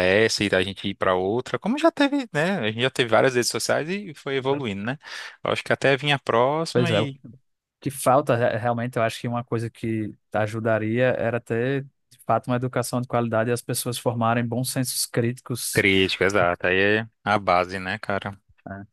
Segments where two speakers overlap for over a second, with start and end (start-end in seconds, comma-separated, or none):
none